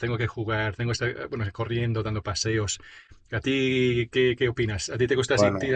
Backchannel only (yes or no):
yes